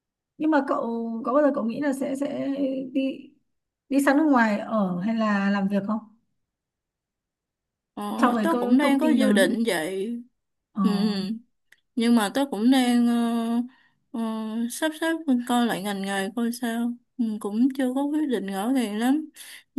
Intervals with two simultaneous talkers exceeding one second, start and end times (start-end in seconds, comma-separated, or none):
8.2-9.6